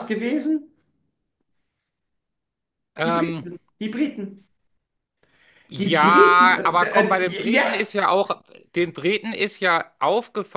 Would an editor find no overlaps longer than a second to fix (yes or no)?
no